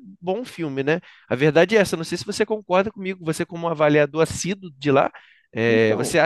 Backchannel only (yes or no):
yes